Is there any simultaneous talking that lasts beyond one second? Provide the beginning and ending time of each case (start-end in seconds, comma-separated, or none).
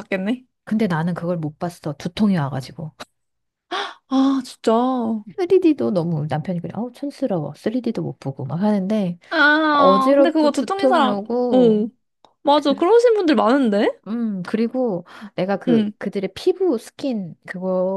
9.7-11.8